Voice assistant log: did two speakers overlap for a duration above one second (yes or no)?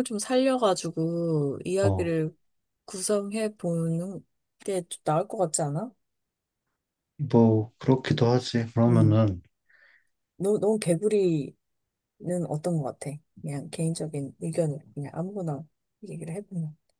no